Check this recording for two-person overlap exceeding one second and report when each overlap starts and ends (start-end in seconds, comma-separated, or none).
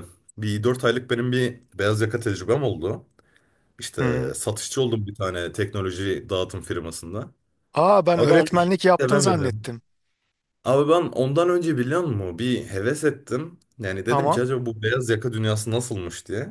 8.1-9.7